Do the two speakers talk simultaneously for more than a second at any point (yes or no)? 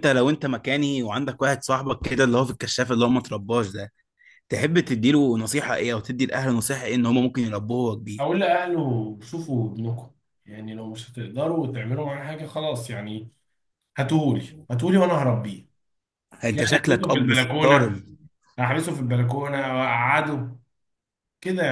yes